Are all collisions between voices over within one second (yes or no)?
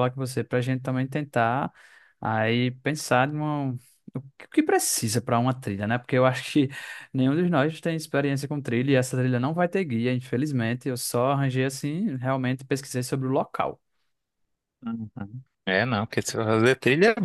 yes